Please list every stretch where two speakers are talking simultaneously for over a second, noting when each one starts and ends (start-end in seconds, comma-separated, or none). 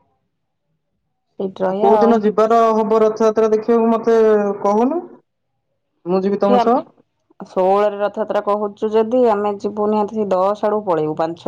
none